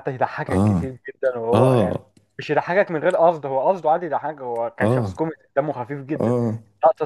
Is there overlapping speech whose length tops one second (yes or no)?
no